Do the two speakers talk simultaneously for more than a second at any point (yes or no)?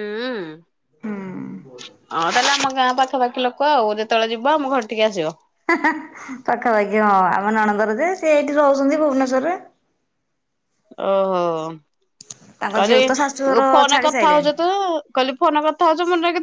yes